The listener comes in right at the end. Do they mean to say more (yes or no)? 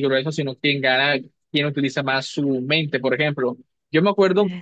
no